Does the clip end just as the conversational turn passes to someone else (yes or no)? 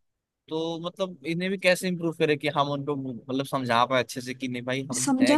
yes